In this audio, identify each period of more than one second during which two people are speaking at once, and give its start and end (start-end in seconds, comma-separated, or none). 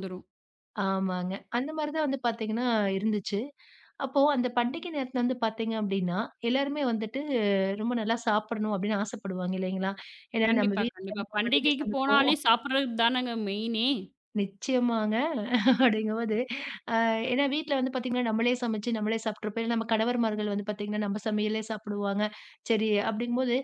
10.5-12.3